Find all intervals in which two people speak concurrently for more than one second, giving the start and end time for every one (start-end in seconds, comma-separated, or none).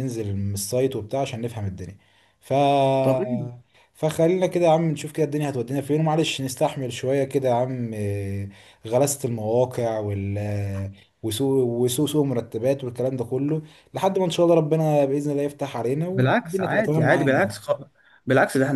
16.1-17.5